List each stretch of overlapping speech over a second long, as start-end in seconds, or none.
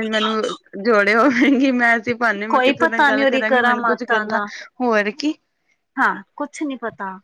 2.5-4.4